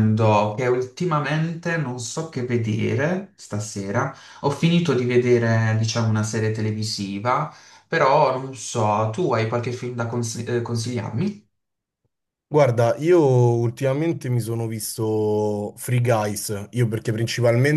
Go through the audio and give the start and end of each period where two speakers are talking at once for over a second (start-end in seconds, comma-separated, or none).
none